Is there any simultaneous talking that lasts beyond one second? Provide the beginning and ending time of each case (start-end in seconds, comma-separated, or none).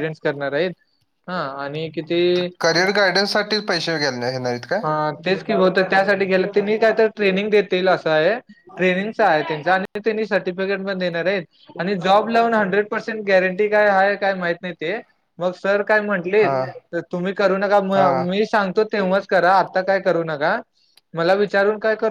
none